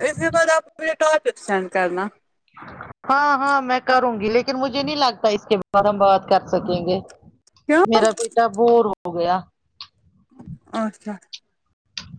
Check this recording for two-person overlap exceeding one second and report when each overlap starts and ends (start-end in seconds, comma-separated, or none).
none